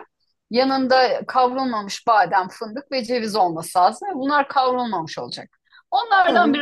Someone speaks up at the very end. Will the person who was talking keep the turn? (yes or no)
yes